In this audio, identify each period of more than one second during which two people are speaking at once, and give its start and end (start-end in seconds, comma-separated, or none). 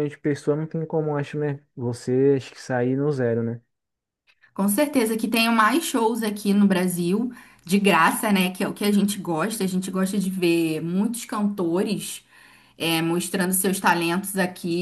none